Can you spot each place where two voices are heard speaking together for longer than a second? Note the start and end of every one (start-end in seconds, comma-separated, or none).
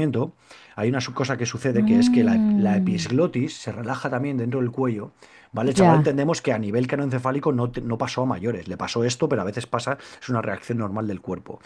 1.7-3.0